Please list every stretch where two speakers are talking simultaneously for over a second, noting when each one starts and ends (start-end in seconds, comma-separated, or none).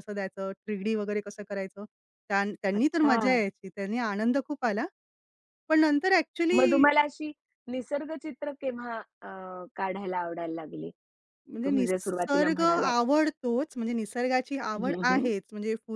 11.6-12.9